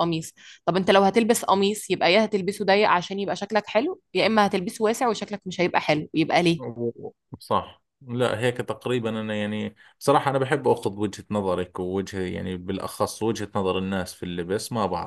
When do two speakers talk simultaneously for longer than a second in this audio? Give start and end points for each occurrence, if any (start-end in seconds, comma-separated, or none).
none